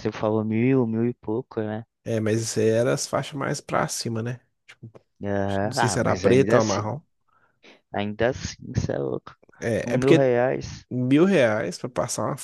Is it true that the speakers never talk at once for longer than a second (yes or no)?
no